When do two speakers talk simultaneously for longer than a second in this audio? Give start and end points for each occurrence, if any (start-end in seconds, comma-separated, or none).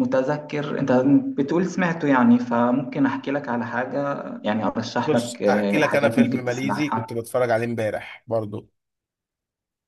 5.0-7.1